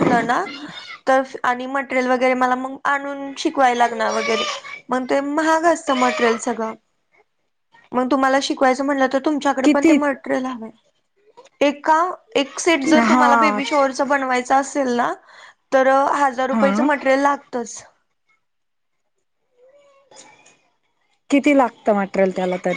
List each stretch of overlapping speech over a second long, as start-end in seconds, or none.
none